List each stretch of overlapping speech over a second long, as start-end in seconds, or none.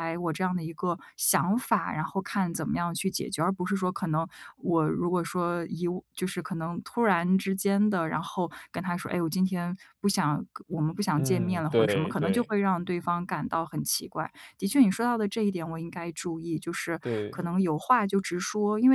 11.2-12.5